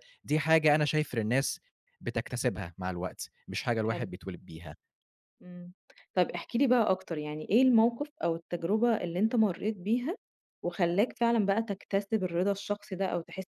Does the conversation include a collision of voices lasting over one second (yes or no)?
no